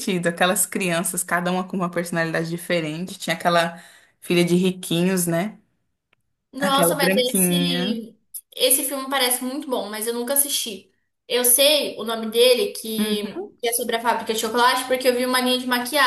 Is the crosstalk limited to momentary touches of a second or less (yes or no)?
no